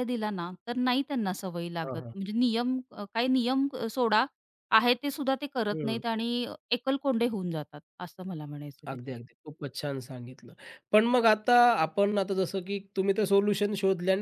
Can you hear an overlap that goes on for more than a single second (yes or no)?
no